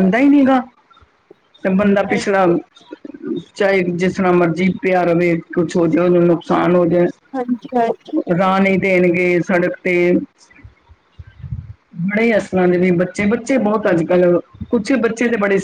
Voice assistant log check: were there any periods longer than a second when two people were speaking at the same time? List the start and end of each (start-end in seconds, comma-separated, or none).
none